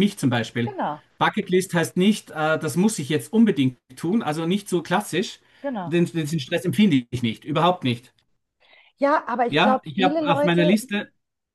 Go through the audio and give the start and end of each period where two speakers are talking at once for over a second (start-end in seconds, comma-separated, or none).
9.5-10.8